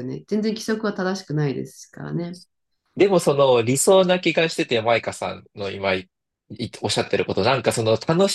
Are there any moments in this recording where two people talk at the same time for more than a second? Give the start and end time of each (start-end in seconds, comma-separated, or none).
none